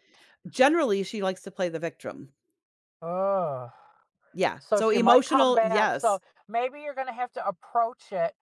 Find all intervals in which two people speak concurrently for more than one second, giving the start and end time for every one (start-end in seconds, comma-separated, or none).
4.6-6.2